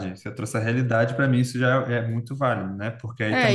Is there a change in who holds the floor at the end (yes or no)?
yes